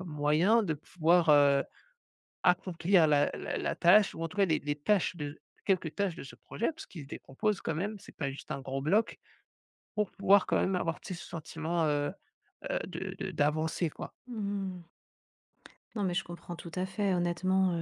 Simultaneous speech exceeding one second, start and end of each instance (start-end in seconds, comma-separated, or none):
none